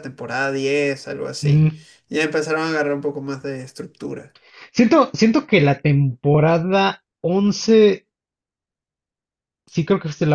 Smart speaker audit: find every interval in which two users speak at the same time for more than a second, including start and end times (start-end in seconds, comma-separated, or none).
none